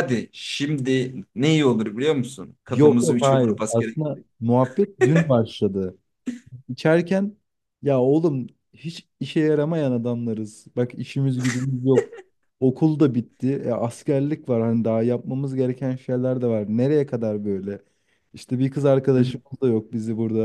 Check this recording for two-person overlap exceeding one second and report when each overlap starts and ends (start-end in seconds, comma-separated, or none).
2.7-4.2